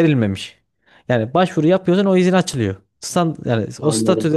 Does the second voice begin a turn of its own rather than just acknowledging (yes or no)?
no